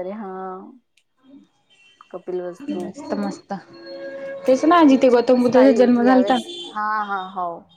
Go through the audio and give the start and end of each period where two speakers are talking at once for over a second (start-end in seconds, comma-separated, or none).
4.9-6.4